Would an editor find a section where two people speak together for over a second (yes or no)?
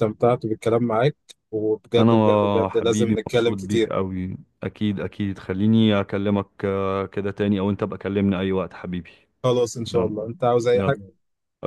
yes